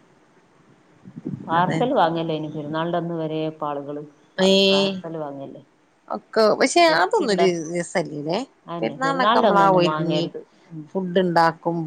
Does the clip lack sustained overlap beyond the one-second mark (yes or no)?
no